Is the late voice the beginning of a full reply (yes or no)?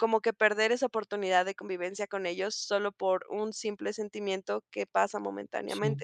no